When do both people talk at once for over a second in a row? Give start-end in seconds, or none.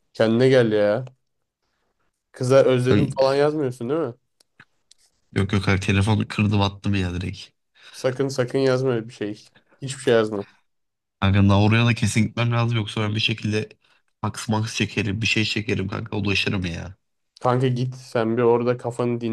none